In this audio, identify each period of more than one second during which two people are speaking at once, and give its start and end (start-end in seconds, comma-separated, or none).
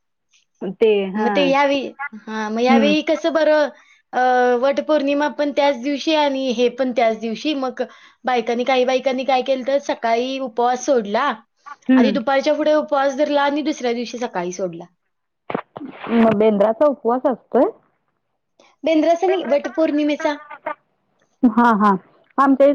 none